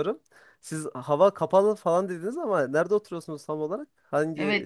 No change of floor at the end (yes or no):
no